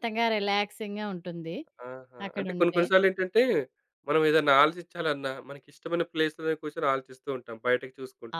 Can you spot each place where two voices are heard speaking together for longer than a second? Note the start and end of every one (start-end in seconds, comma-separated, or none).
none